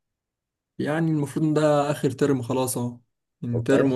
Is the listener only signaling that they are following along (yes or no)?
yes